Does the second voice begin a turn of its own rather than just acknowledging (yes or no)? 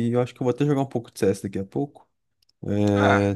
no